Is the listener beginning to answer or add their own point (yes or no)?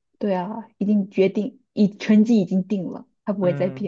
yes